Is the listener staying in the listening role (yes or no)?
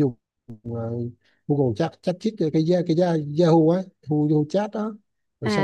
yes